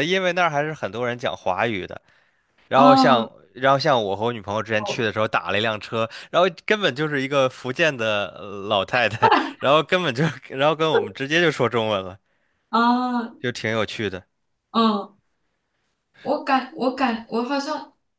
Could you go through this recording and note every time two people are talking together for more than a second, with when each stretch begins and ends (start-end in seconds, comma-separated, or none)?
none